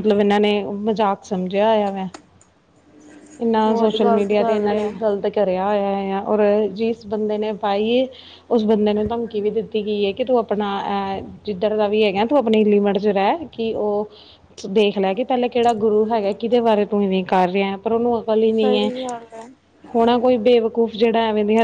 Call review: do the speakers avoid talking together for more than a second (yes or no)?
no